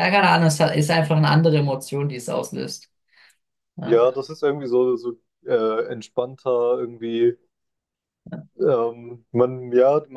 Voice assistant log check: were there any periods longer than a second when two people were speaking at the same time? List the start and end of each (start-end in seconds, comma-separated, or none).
none